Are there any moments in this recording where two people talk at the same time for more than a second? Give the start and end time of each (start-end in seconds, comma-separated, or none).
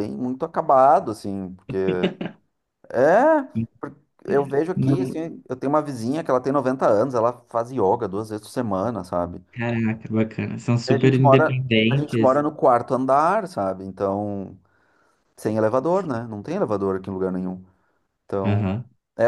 10.9-12.4